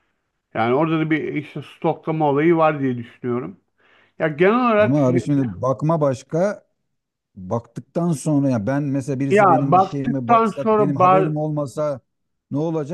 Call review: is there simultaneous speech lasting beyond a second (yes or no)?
yes